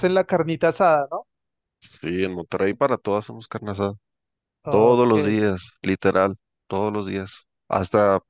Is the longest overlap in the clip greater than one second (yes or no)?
no